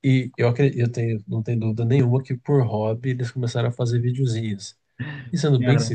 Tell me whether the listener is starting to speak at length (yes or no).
no